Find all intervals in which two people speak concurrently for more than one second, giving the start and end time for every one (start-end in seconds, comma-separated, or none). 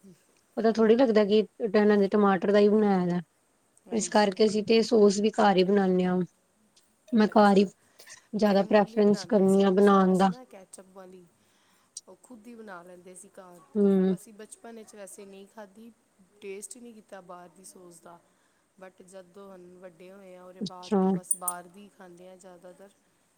8.5-10.3